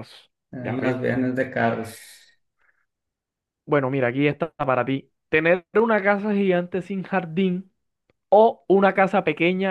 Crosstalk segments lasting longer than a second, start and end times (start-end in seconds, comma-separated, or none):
none